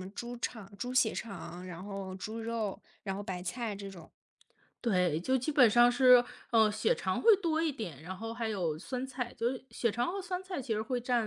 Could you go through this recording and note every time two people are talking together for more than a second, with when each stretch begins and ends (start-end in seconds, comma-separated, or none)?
none